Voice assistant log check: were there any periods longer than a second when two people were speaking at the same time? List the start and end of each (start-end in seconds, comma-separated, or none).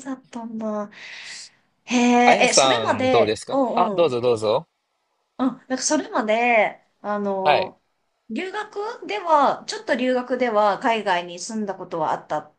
2.2-4.2